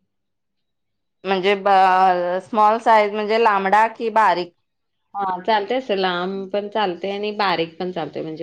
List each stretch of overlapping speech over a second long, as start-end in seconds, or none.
none